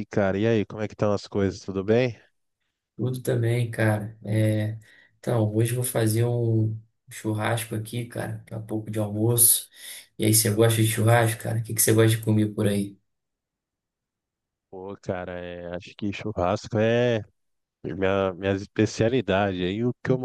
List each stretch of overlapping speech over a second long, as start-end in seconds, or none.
none